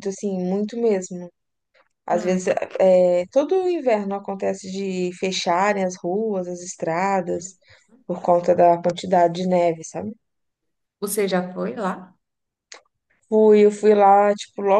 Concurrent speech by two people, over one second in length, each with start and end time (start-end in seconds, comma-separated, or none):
none